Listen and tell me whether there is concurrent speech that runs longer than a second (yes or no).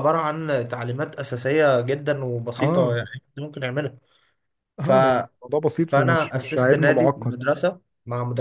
yes